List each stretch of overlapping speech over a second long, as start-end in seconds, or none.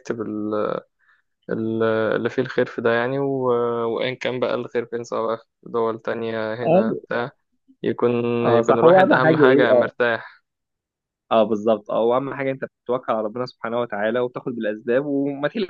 8.5-9.9